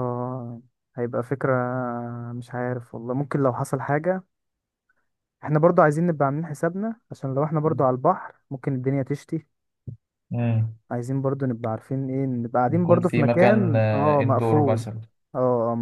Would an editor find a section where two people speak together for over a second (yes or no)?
yes